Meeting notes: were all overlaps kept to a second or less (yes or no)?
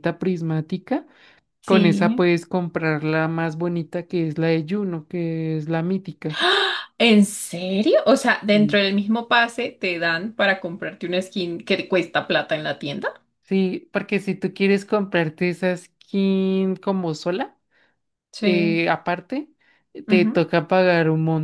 yes